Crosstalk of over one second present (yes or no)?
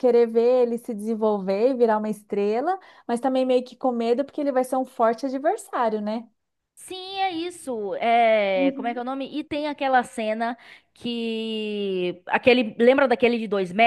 no